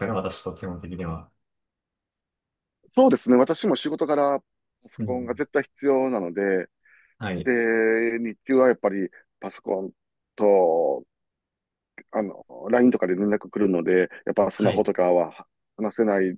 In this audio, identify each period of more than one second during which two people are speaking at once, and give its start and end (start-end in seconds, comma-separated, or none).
none